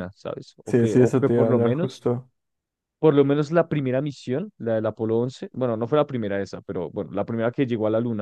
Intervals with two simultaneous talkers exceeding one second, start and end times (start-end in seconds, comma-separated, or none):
0.7-2.1